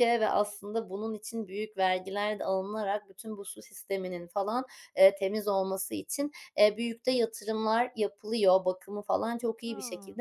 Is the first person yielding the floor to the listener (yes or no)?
no